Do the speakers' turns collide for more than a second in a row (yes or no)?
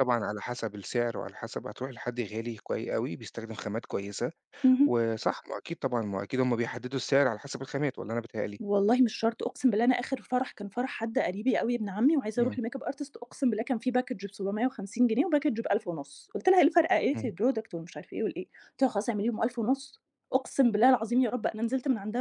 no